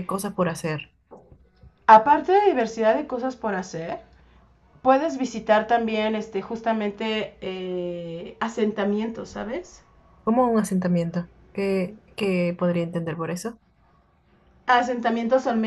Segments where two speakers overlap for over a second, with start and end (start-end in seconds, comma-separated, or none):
none